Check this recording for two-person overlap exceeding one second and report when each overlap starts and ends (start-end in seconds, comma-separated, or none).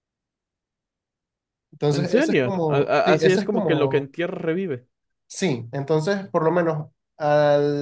1.9-4.1